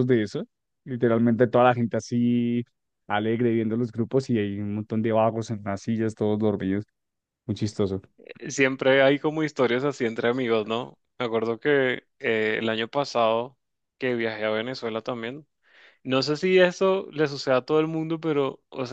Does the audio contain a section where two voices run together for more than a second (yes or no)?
no